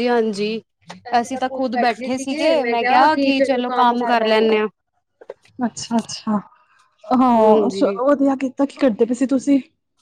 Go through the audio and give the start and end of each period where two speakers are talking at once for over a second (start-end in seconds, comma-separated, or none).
none